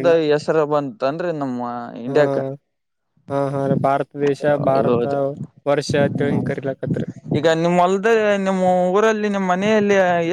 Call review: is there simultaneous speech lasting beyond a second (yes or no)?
no